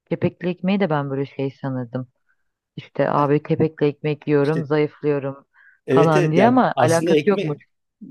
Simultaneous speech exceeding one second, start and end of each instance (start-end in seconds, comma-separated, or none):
5.9-7.6